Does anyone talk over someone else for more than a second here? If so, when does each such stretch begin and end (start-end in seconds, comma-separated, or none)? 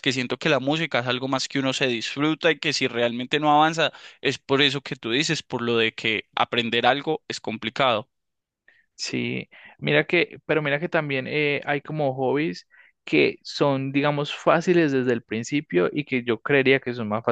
none